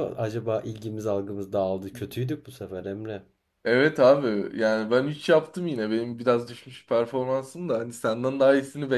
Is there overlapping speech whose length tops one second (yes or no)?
no